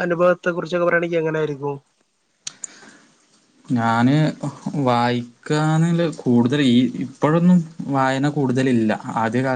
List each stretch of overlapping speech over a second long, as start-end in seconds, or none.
none